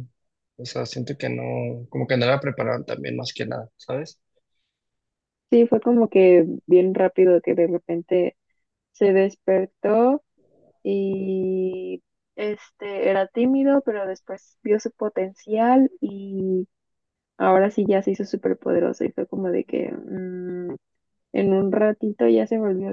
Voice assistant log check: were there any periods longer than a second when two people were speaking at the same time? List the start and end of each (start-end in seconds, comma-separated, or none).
none